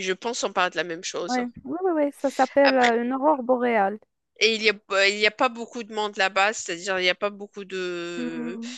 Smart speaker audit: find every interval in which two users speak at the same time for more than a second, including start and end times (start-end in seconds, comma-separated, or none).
none